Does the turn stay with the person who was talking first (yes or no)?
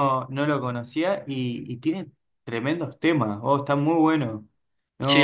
no